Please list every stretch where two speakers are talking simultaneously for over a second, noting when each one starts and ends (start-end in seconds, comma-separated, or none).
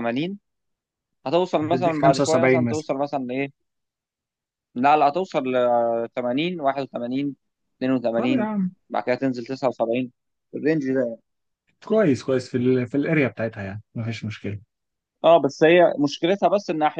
1.6-2.9